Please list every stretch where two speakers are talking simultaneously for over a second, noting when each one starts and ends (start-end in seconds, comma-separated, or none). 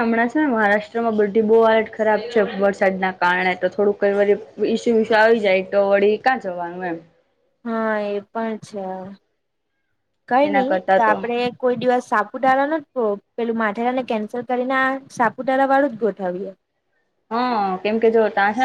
none